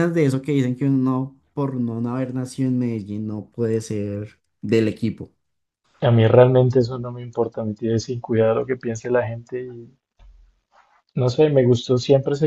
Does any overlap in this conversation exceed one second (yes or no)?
no